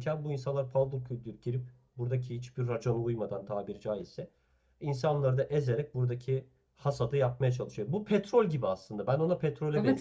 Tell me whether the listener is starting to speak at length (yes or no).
no